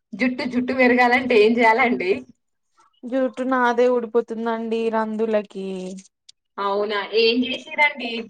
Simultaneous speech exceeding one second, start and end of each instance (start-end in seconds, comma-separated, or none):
none